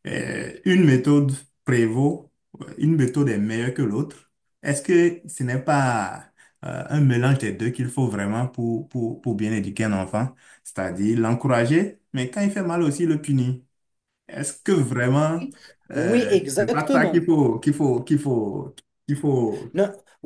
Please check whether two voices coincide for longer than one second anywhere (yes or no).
yes